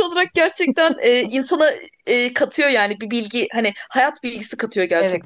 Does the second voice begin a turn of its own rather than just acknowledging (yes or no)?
yes